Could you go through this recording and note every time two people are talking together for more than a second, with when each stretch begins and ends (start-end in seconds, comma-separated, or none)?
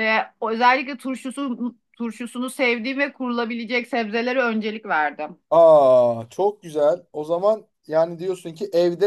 none